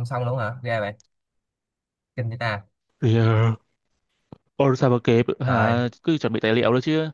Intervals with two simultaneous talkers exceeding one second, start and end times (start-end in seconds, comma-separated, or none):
none